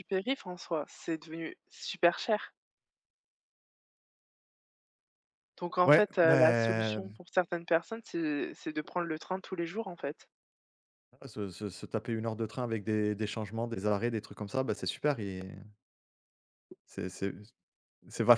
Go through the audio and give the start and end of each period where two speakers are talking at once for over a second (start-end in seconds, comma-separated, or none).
5.8-7.2